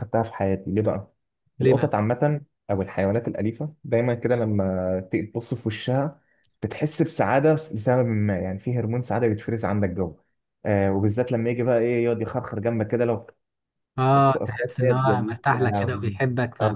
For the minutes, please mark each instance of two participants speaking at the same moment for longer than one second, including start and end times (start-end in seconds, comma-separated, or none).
14.1-16.0